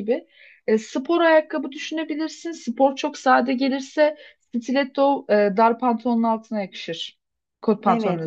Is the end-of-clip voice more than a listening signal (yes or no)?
yes